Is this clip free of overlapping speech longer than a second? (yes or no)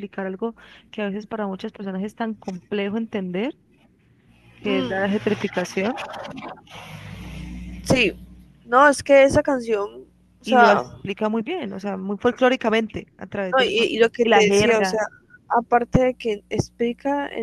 no